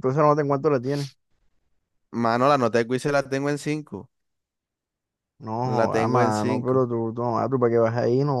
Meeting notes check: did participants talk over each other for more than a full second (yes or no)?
yes